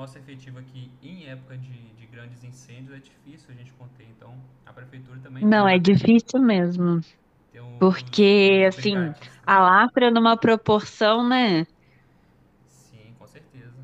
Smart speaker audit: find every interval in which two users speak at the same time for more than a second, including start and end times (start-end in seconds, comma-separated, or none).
7.8-9.6